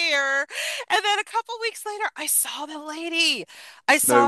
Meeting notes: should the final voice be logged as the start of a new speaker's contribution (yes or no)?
no